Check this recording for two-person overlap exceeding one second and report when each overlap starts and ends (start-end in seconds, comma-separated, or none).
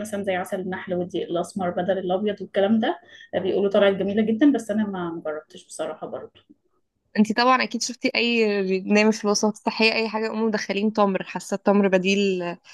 none